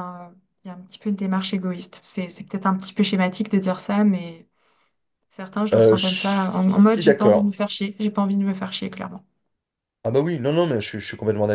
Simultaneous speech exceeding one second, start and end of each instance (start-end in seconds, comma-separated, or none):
5.7-7.5